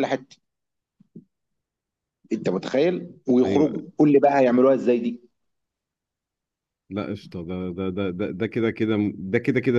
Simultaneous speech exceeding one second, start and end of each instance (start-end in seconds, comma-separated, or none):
none